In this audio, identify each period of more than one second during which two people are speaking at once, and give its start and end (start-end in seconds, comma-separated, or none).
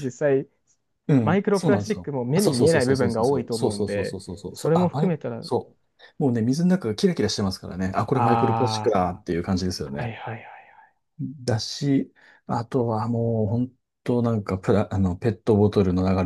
1.2-5.5